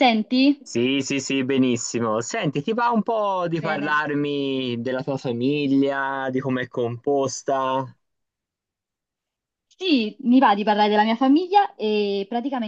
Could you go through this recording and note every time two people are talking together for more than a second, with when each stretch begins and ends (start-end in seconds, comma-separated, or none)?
none